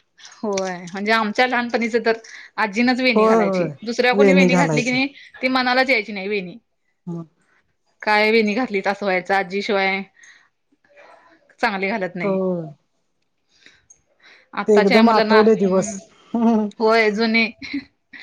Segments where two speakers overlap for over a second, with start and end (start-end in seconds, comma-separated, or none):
14.7-16.0